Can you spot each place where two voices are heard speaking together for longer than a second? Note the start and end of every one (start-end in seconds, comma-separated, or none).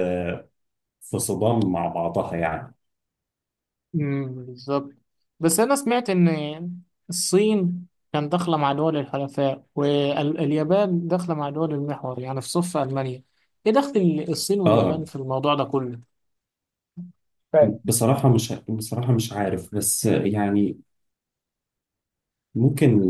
none